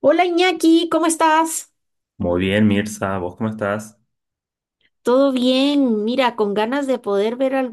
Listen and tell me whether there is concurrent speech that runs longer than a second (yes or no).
no